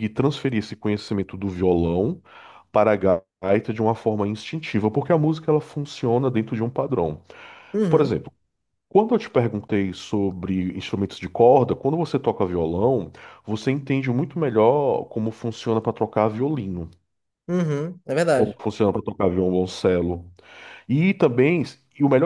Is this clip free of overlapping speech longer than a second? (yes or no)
yes